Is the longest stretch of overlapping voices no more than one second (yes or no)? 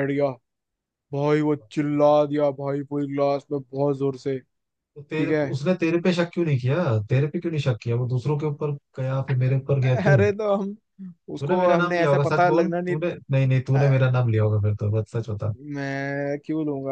no